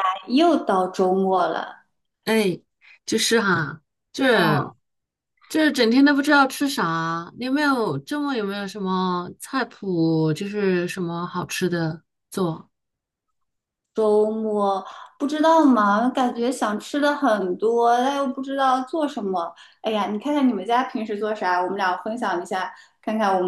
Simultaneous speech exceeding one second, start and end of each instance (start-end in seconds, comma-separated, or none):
none